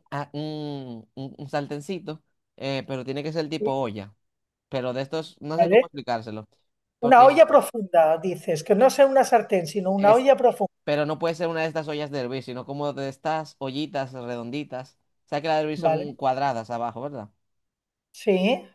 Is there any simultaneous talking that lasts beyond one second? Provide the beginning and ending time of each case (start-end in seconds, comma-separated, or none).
none